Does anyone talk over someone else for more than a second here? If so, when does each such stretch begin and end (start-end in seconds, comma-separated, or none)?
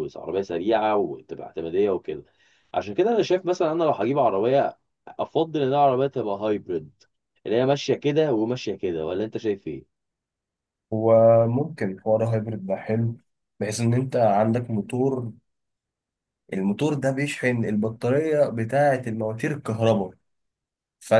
none